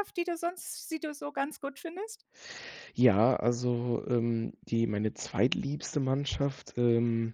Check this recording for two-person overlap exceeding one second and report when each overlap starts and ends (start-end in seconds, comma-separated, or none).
none